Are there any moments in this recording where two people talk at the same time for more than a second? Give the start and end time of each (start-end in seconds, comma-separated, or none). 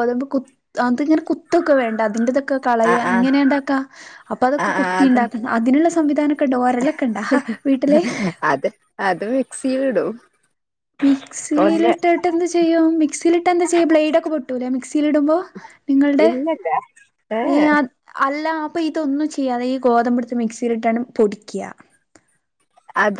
none